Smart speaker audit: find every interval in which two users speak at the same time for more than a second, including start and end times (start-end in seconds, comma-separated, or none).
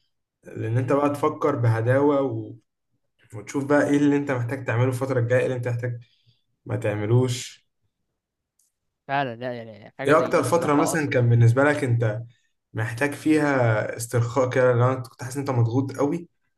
10.1-11.3